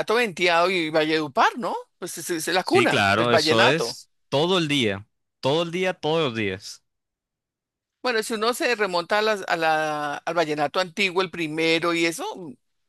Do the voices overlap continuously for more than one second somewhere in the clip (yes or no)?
yes